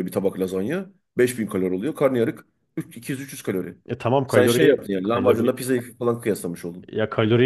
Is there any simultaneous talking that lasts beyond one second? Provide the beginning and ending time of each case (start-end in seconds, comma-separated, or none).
4.3-5.6